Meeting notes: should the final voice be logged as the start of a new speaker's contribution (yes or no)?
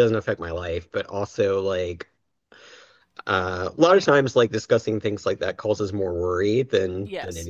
no